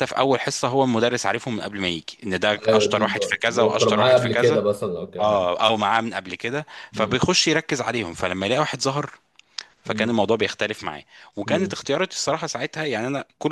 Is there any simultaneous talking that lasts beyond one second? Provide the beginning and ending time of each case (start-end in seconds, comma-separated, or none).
2.7-4.6